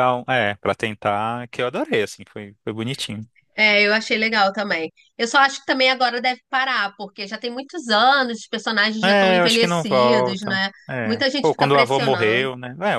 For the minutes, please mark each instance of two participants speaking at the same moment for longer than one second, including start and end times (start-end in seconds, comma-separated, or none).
9.0-12.5